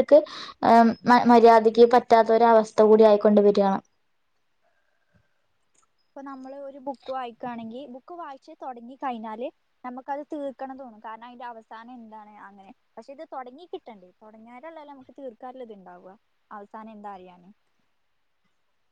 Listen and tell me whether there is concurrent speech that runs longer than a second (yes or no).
no